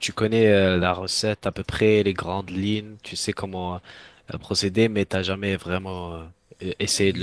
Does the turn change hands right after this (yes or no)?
yes